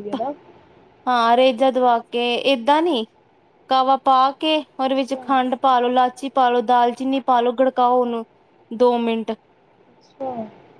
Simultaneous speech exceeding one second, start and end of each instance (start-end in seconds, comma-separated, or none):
none